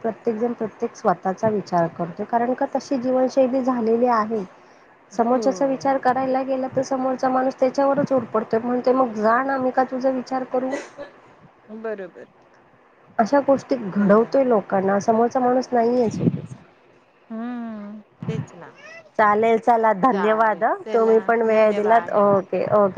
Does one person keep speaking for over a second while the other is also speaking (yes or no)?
yes